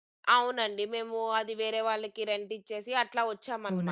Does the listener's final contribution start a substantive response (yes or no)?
yes